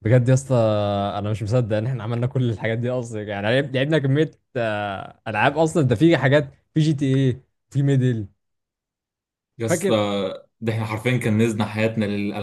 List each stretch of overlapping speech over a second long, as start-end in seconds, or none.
none